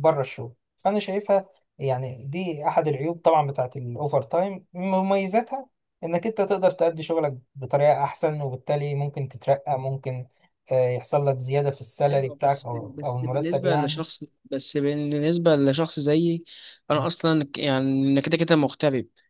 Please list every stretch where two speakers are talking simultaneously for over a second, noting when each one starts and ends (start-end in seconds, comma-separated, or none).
12.1-14.0